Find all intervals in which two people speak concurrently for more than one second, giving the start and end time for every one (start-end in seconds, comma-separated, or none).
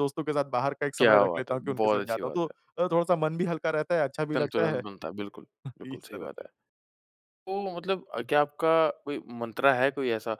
1.0-2.4